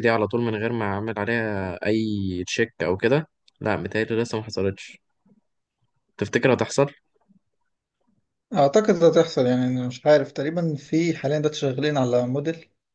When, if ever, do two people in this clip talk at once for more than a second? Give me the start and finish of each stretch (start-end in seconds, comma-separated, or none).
none